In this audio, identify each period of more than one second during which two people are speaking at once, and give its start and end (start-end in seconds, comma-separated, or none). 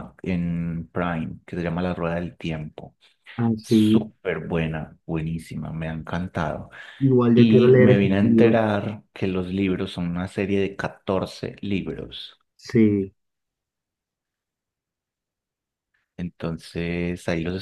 7.3-8.6